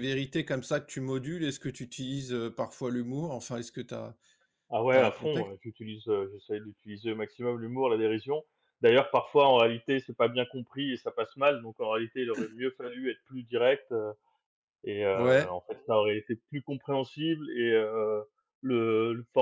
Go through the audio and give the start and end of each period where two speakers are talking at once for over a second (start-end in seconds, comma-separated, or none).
none